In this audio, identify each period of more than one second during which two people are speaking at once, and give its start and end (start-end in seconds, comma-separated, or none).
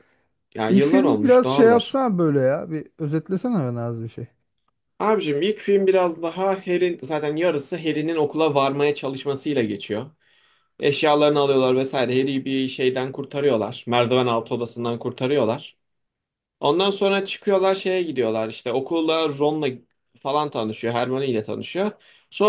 0.7-2.0